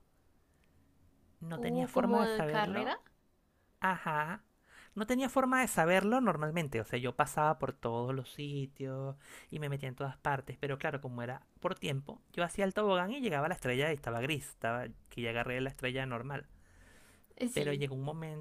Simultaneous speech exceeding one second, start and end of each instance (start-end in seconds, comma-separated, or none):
1.6-2.9